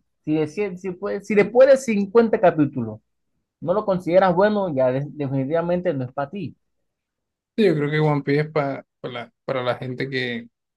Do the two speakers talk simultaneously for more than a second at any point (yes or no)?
no